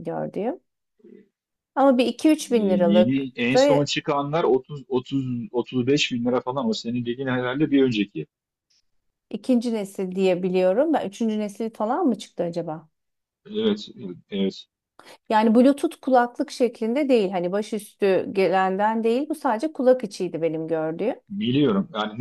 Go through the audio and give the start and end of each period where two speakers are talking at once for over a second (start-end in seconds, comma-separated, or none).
2.5-3.9